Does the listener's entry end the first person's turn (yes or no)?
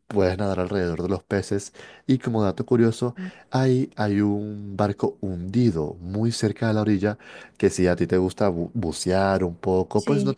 no